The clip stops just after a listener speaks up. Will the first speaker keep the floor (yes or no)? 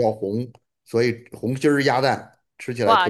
no